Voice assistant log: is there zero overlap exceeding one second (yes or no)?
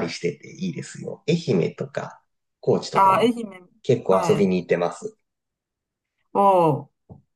yes